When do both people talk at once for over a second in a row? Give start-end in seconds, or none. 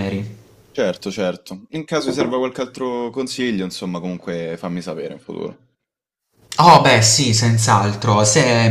none